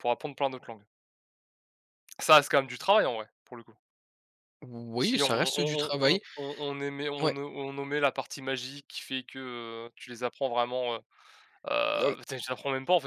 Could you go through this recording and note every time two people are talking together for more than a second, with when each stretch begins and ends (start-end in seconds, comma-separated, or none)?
5.0-6.2